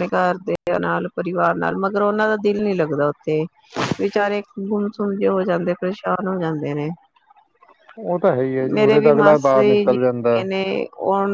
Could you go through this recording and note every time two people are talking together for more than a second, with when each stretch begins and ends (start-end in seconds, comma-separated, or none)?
8.7-10.4